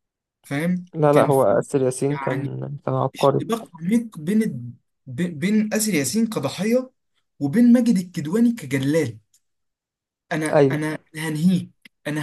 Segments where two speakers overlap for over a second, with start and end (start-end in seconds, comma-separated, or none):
none